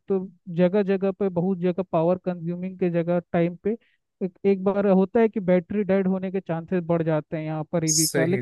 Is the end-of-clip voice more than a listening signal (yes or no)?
no